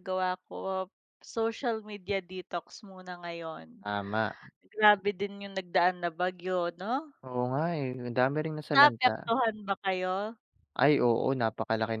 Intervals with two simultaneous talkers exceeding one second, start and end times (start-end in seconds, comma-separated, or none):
none